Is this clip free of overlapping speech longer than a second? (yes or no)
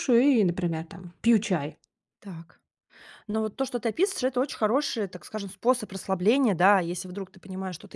yes